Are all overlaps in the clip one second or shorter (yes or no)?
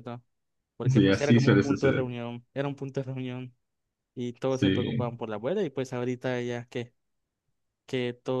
no